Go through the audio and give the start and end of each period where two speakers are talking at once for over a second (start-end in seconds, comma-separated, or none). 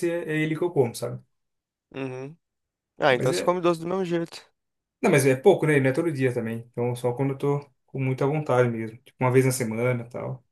none